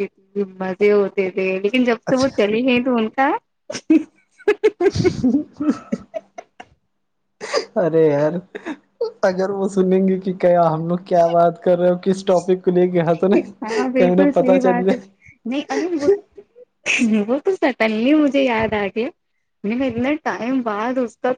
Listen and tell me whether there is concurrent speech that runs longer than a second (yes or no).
yes